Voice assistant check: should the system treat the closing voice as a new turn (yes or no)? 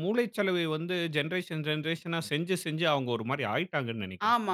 yes